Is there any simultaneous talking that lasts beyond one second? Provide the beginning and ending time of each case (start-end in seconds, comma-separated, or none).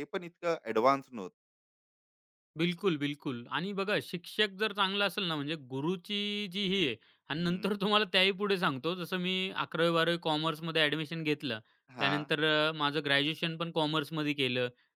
none